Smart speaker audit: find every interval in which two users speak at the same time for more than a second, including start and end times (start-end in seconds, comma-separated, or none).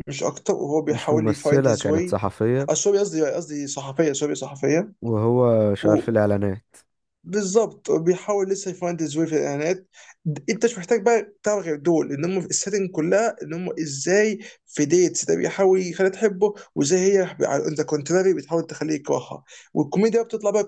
0.9-2.1